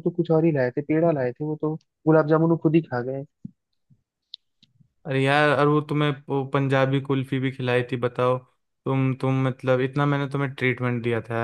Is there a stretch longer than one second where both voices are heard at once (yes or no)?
no